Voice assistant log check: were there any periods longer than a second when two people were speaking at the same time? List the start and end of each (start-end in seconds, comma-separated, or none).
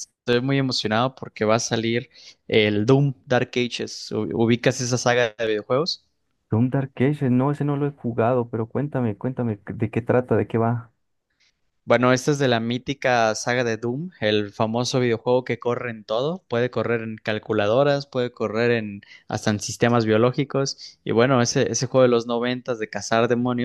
none